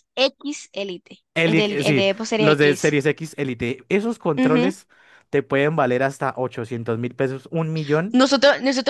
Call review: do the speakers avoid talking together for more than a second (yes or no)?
no